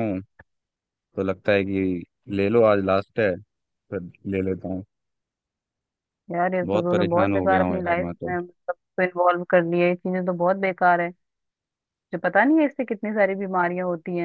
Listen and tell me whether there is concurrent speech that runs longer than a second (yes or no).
yes